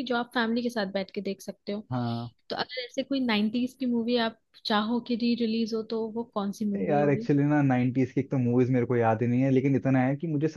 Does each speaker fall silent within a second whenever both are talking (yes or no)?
yes